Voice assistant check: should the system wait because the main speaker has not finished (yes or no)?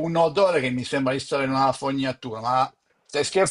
no